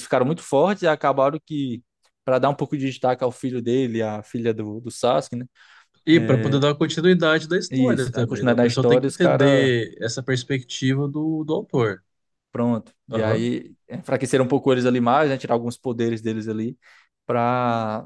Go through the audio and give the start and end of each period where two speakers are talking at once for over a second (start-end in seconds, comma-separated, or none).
7.7-9.7